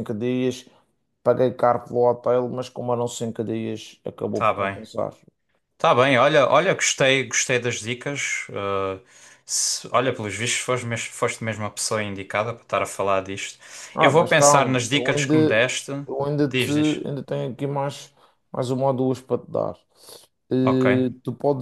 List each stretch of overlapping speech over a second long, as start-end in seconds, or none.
14.0-15.6